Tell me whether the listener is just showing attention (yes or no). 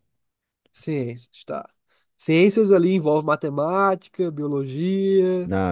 no